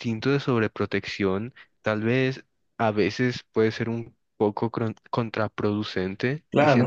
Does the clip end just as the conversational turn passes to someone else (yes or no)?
no